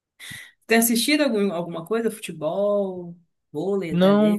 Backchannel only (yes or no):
no